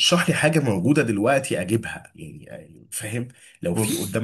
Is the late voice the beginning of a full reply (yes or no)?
no